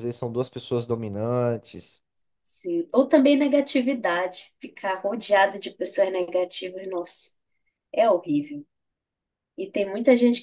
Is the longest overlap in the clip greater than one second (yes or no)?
no